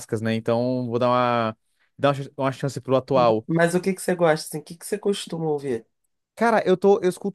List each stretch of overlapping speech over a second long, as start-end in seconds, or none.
none